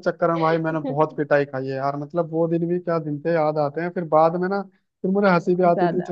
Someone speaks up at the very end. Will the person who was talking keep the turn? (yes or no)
yes